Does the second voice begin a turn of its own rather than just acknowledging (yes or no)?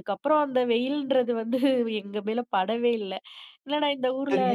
yes